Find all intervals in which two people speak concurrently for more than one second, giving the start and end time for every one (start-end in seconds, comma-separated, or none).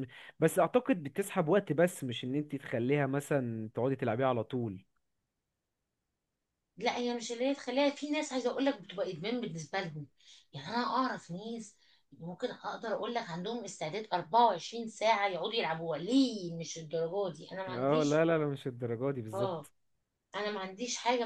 none